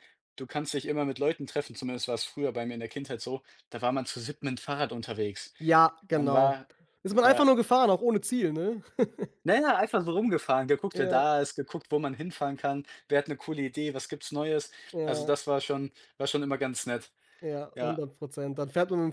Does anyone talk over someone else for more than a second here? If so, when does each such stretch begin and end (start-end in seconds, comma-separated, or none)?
none